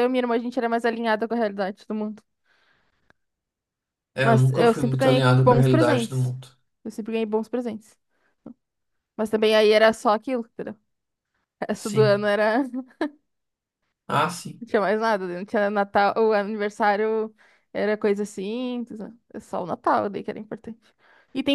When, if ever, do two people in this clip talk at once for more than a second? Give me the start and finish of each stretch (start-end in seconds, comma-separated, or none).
4.2-6.3